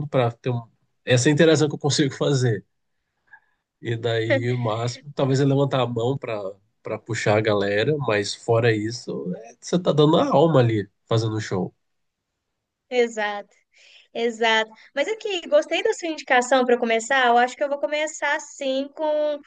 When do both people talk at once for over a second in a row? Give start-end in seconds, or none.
none